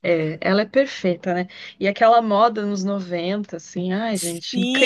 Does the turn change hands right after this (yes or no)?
yes